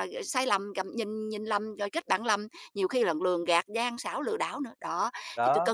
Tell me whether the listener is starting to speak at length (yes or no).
no